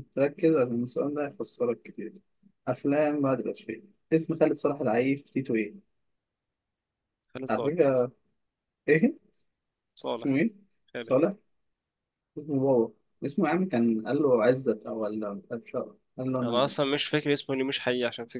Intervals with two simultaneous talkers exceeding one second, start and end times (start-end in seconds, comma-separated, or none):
none